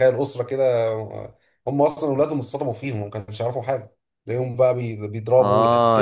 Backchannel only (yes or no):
no